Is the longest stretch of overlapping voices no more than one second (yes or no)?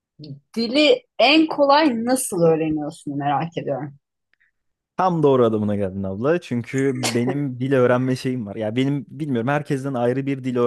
yes